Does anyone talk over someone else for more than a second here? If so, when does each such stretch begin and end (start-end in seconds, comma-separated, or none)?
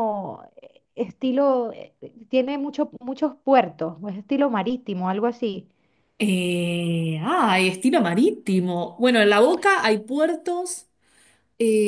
none